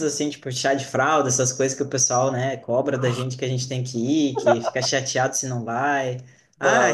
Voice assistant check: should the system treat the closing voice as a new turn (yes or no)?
no